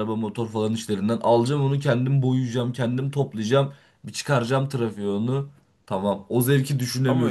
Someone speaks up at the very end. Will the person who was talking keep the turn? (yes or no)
no